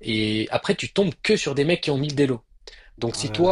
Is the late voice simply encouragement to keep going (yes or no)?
yes